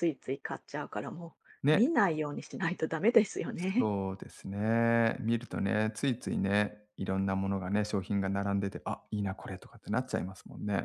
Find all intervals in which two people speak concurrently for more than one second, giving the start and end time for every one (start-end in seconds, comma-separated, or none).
none